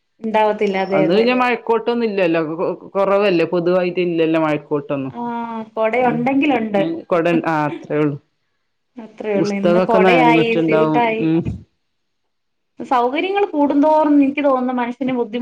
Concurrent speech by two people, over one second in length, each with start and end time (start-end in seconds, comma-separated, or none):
9.4-11.2